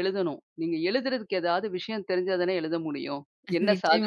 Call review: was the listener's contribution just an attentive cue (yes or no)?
no